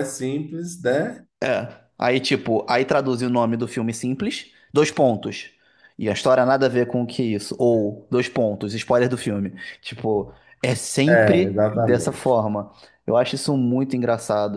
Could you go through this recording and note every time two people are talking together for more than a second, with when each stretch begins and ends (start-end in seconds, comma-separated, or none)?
11.1-12.4